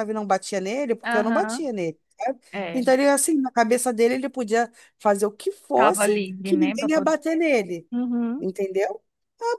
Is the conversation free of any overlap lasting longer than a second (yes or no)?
no